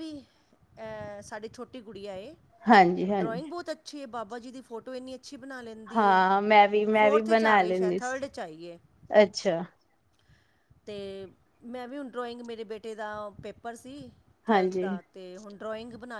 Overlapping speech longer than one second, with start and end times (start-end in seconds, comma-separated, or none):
7.0-8.2